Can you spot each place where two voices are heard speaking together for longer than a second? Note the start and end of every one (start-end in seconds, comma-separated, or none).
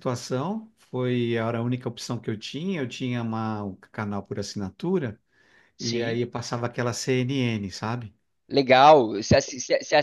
none